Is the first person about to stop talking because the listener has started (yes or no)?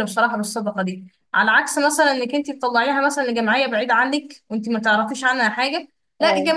no